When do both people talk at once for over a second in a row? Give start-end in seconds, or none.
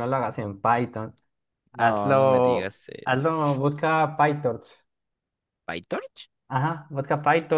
1.7-3.3